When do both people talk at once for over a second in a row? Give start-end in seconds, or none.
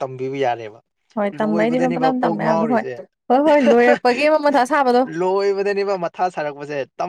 1.4-2.8